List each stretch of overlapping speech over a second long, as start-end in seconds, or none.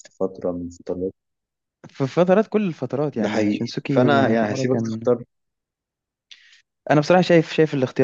3.2-5.1